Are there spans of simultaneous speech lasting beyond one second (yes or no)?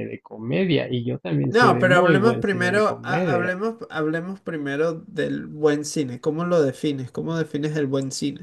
yes